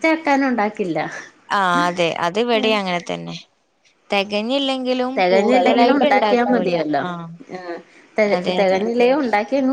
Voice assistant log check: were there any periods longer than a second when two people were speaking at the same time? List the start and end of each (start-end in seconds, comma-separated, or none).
5.2-7.0